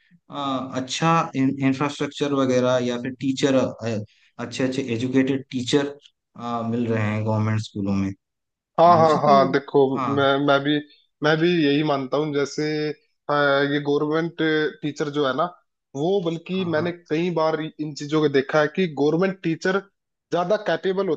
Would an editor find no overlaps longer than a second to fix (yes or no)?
yes